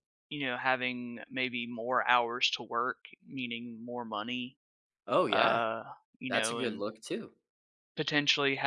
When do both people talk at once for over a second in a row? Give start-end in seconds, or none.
none